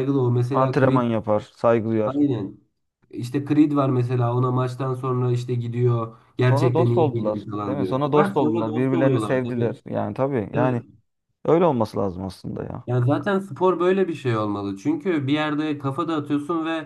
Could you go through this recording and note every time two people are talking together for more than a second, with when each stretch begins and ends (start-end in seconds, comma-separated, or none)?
6.5-9.8